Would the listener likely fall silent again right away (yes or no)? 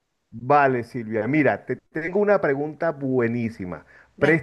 yes